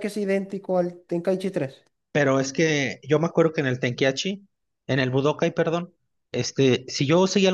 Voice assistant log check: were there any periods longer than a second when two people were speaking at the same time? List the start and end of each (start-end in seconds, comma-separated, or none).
none